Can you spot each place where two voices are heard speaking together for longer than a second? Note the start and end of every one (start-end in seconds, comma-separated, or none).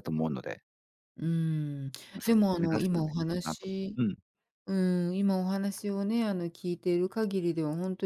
2.1-4.0